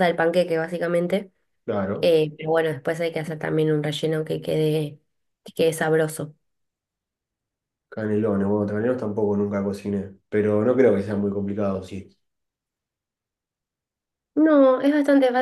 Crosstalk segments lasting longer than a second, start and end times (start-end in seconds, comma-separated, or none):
none